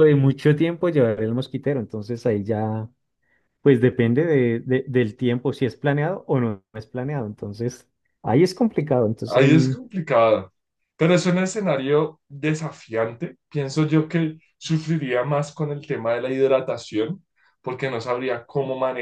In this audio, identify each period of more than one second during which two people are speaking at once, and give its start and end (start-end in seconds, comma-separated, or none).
none